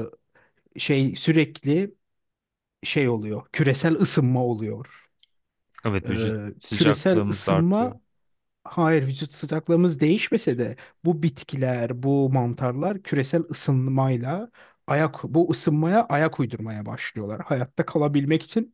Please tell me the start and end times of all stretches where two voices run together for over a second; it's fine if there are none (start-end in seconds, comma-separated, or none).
6.1-7.9